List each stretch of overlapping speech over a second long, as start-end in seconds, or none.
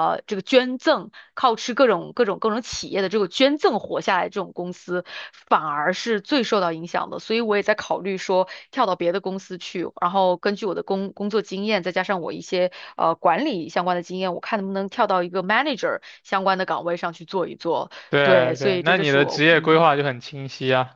18.1-19.9